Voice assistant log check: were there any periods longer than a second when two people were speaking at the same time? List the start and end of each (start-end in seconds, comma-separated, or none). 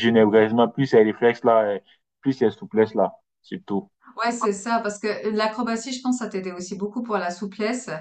none